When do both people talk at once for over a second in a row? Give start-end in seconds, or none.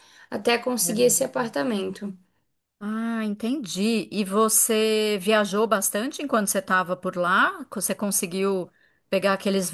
none